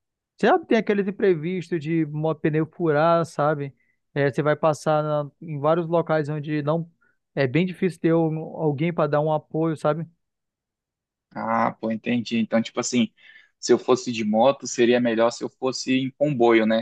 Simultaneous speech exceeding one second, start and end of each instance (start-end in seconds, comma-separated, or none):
none